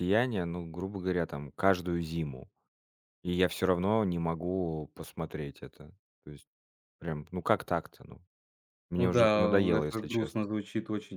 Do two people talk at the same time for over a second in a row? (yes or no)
yes